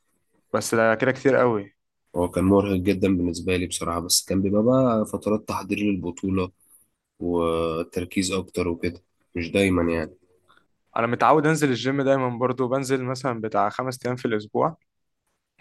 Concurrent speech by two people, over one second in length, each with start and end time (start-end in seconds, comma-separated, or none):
none